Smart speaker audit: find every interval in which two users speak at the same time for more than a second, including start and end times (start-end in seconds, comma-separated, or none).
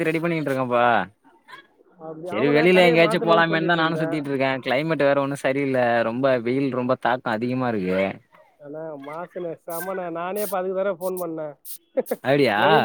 2.3-4.1